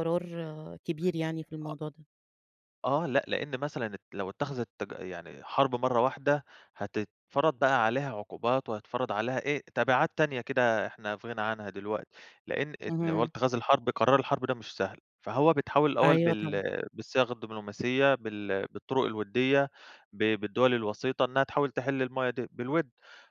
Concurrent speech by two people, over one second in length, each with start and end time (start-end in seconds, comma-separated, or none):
none